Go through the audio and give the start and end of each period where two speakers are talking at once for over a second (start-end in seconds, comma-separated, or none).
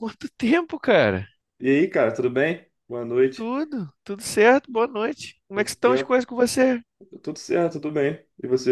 none